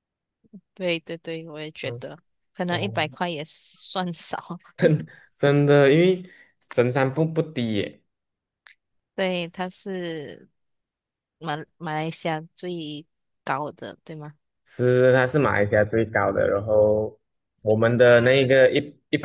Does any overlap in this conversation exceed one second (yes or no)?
no